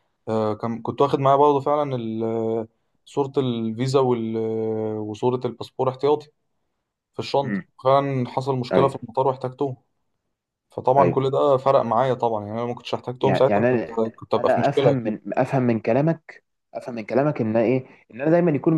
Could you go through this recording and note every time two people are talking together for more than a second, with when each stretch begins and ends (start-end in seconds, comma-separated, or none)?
13.2-15.2